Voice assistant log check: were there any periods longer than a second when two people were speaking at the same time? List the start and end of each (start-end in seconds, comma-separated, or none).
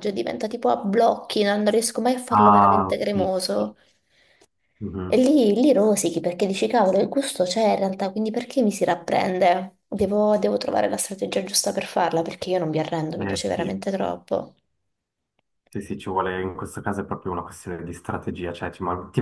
2.3-3.7